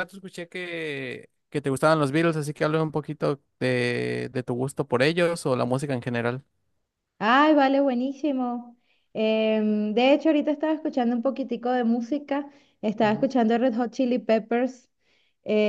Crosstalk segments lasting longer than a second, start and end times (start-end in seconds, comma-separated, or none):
none